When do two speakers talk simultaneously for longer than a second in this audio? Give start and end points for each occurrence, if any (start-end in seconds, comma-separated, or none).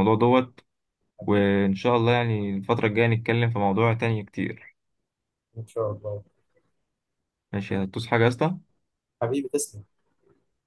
none